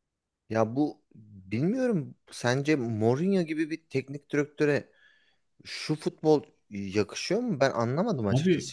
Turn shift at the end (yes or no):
yes